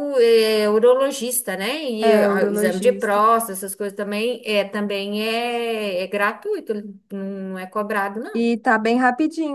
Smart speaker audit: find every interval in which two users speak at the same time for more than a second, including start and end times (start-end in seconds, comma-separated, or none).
2.0-3.2